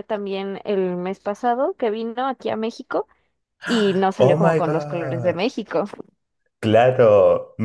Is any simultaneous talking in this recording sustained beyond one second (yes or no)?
yes